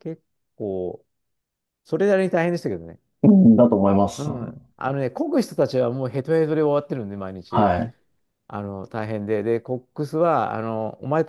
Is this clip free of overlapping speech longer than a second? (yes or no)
yes